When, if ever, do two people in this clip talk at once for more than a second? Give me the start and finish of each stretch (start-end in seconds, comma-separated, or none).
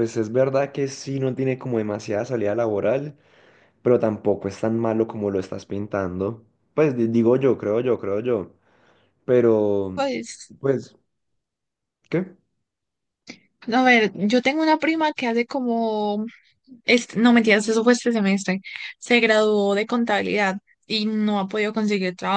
none